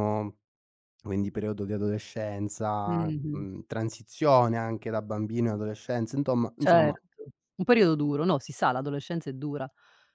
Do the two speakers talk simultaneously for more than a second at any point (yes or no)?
no